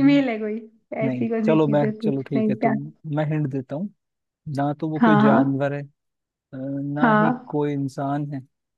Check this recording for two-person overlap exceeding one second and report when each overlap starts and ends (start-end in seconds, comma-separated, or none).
1.1-2.7